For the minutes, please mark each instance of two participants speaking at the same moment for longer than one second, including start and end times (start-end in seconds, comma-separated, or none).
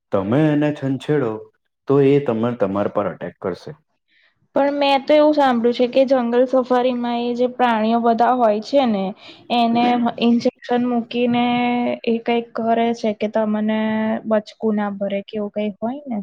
none